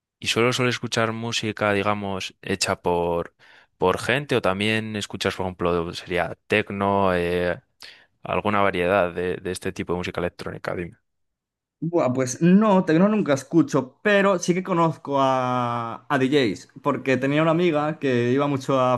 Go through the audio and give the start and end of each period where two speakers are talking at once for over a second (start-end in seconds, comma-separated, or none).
none